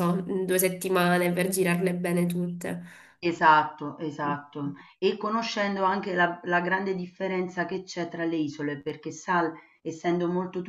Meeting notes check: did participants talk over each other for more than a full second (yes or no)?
no